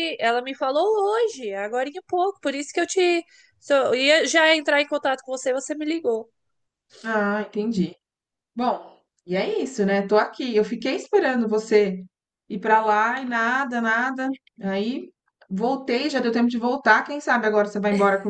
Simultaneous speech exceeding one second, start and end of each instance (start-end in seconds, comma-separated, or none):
none